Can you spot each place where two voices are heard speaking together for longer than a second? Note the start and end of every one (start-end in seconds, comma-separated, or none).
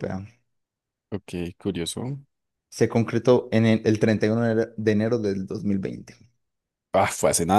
none